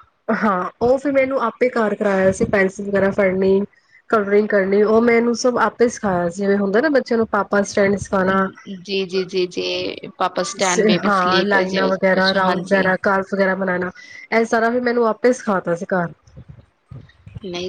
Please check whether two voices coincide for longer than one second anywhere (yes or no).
yes